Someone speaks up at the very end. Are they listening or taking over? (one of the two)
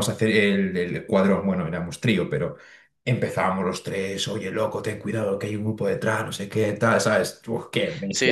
taking over